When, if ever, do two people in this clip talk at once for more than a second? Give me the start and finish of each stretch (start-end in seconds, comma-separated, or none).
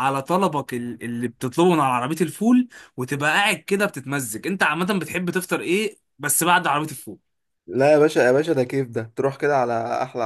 none